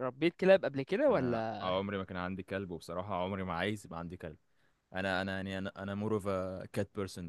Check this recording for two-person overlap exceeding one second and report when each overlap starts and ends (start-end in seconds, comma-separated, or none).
none